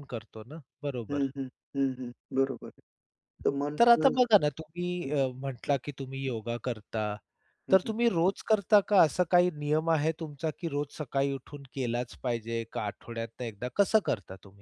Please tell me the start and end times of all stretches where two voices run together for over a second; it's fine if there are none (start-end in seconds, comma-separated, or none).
none